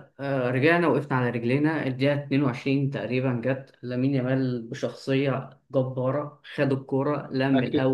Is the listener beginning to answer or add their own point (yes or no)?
no